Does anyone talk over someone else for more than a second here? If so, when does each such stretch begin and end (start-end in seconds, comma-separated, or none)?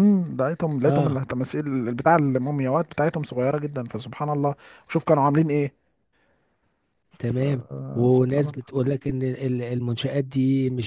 7.2-8.7